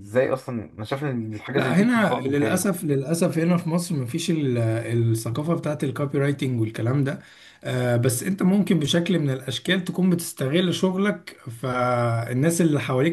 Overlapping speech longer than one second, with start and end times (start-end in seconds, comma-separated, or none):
1.5-2.8